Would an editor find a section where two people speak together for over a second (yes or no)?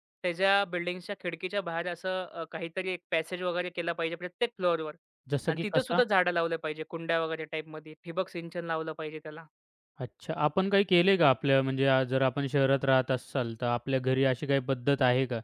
no